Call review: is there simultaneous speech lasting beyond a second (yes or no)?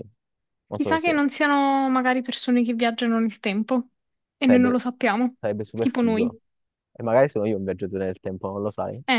no